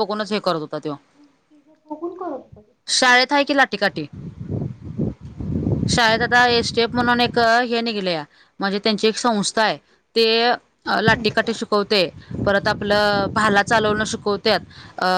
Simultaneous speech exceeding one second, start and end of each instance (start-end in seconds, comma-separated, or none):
none